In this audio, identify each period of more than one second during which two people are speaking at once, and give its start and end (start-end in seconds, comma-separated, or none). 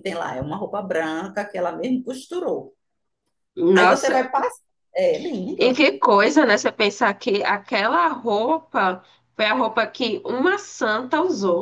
none